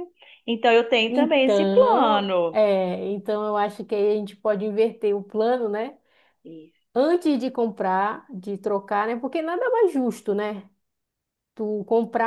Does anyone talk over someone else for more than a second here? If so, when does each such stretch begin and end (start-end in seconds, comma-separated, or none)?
1.1-2.6